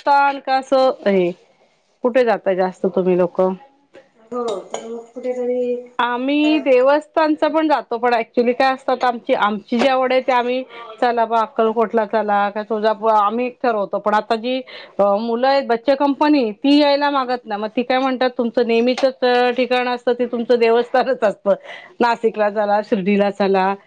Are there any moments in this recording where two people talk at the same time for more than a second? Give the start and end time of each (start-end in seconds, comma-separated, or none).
none